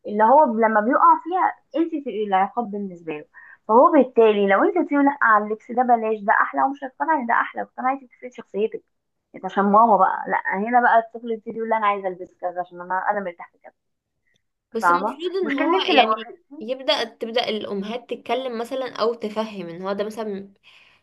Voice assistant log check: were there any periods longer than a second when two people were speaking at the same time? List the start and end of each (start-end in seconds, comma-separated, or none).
14.8-16.7